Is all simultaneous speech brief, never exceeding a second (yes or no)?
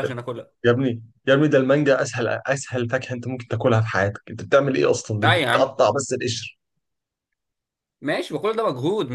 yes